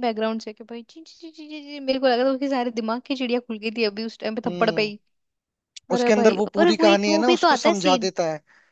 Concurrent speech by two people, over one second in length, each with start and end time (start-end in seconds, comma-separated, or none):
5.9-8.1